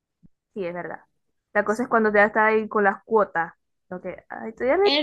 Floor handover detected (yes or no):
yes